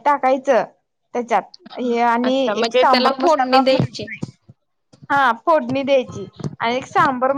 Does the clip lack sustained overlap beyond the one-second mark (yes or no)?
no